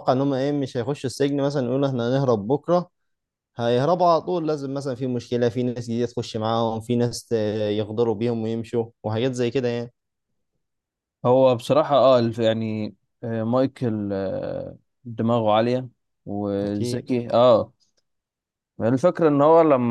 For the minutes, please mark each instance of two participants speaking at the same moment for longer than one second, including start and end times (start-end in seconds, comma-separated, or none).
none